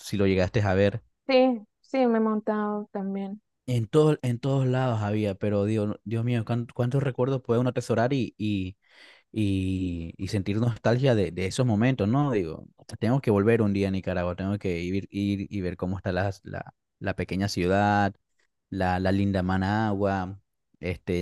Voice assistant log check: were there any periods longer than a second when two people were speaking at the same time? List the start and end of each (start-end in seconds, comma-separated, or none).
none